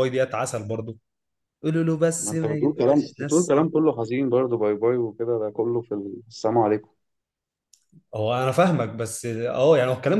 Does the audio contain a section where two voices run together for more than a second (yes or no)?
yes